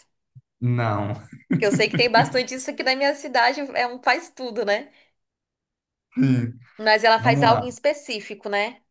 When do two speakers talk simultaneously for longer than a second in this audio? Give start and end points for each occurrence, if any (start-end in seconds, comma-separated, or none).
none